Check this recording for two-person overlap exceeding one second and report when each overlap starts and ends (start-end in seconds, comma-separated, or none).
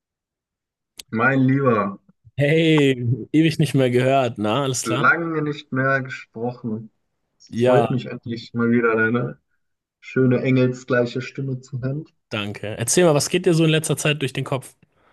none